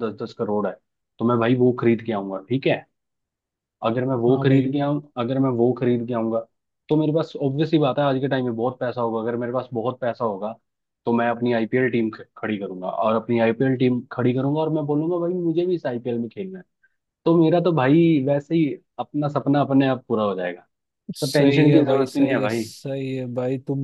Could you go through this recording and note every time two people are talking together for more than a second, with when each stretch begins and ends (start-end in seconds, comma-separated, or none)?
21.2-22.6